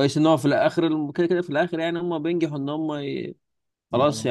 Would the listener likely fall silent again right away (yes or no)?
yes